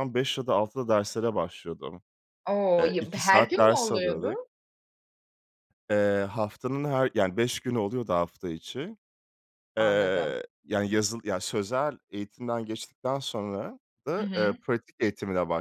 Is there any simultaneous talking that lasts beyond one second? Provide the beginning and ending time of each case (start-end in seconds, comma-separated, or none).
2.8-4.4